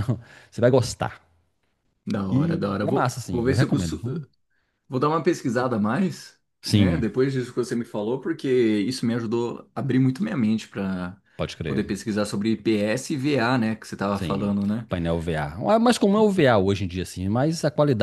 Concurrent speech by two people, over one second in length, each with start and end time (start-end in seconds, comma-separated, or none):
2.3-4.0